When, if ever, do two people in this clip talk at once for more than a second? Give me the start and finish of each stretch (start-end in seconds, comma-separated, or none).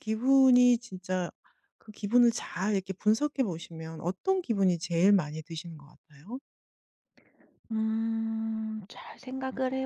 none